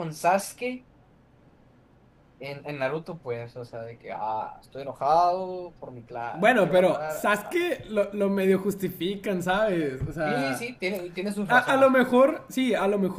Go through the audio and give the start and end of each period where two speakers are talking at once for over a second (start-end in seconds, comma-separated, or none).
6.3-7.7